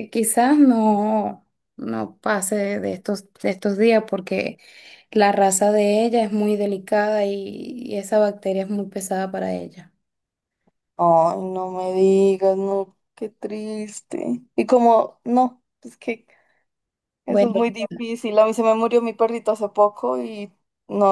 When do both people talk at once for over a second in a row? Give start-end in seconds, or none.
none